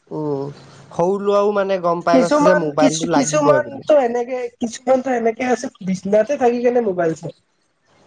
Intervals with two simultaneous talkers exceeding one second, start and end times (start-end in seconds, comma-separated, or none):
2.1-3.8